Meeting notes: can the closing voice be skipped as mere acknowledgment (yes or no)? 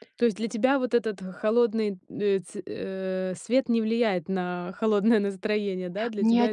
no